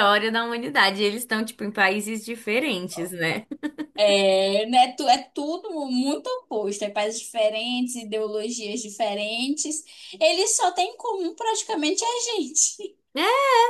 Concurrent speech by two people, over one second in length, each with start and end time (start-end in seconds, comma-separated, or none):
none